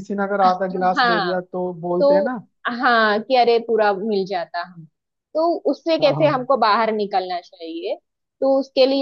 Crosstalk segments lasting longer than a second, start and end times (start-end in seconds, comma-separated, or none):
none